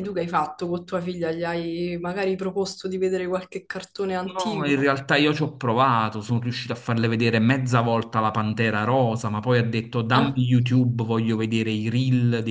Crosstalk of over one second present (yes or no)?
no